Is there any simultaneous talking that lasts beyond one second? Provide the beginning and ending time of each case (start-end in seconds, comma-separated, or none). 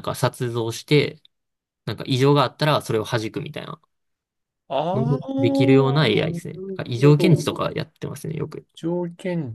4.9-7.5